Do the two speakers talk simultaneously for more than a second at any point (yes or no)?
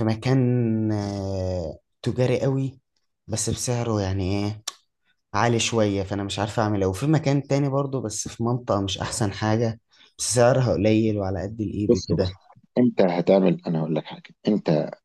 no